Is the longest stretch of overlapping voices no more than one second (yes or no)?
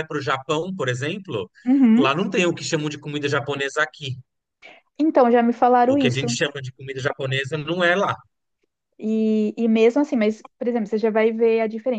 yes